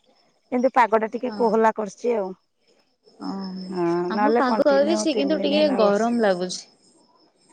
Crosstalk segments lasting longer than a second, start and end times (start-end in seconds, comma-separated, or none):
4.1-6.2